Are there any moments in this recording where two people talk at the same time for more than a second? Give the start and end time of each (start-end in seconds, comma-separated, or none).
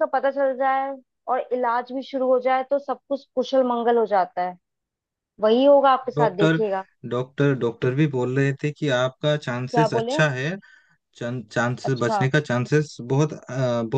none